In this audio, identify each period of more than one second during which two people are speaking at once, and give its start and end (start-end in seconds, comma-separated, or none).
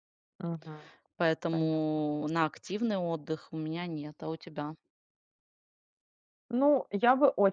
none